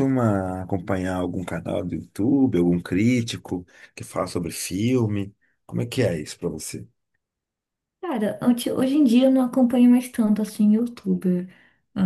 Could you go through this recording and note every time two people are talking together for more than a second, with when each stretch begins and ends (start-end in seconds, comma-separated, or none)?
none